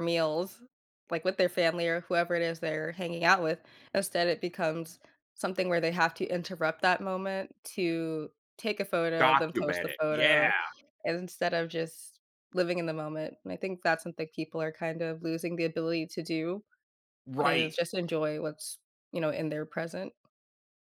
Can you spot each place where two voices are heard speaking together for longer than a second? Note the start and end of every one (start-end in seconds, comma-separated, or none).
9.2-10.5